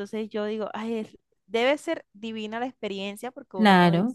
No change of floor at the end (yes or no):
yes